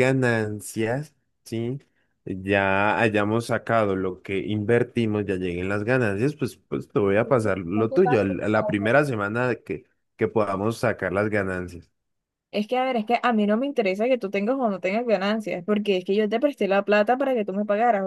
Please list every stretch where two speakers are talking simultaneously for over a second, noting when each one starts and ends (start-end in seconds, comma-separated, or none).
7.2-8.4